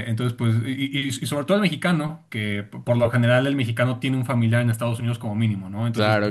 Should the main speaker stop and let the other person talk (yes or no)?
no